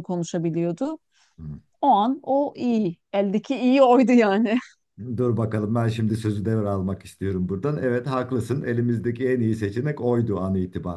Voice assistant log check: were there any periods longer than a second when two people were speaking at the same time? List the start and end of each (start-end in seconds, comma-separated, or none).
none